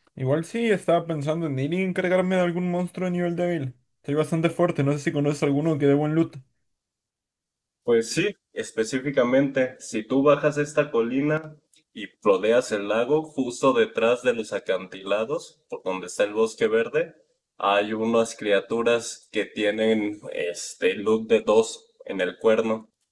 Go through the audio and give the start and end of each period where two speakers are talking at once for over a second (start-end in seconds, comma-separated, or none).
none